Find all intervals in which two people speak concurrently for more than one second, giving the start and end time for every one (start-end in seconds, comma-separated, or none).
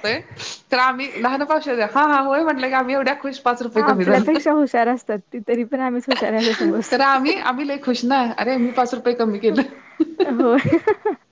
none